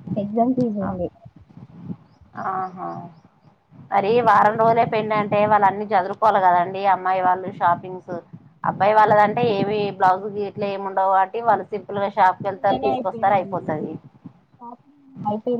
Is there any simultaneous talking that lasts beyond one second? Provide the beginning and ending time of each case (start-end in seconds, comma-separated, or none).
none